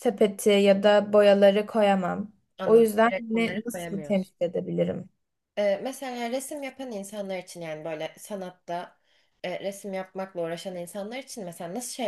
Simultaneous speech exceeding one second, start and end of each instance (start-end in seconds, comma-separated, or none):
2.6-4.3